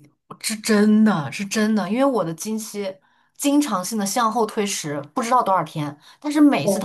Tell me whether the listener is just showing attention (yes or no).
yes